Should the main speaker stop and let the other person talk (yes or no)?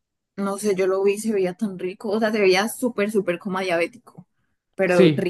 yes